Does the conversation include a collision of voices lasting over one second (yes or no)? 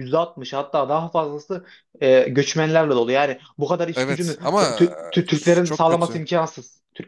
yes